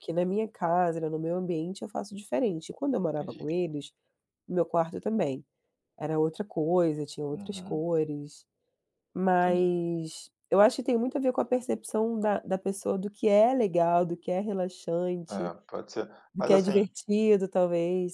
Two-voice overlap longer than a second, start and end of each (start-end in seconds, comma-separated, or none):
none